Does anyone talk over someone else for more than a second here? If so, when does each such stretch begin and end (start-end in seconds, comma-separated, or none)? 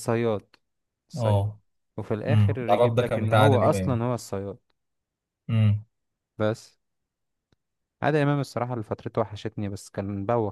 2.3-4.0